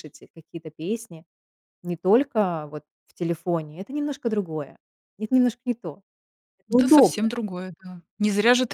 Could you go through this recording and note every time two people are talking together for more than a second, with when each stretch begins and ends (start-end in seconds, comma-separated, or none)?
none